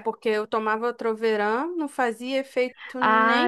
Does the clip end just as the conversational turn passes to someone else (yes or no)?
yes